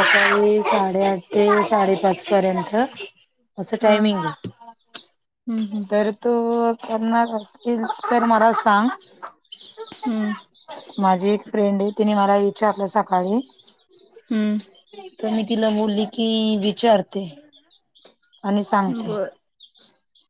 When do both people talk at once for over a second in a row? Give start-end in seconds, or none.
none